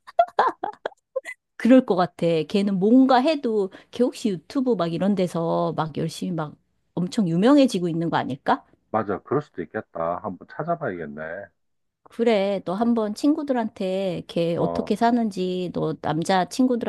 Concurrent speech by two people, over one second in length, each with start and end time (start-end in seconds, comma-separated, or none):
none